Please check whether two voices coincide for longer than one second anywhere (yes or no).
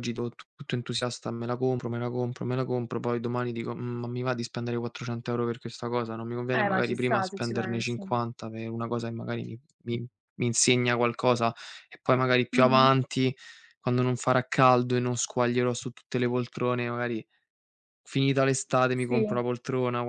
yes